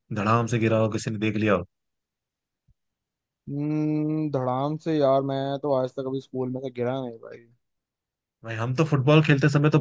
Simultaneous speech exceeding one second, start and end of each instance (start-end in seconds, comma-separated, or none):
none